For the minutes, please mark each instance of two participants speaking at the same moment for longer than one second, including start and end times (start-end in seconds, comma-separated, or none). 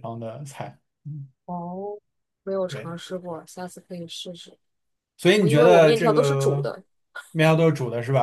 5.4-6.7